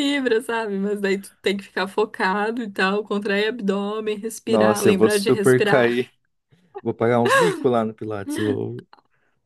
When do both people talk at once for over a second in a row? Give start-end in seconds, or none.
4.5-6.0